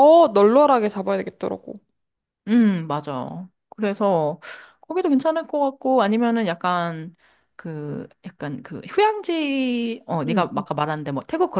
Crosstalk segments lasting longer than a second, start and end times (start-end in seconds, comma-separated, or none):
none